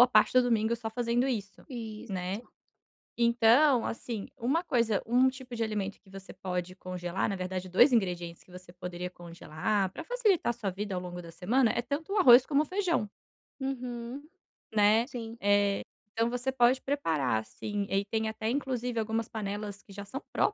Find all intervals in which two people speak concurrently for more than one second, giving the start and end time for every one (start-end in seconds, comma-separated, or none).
none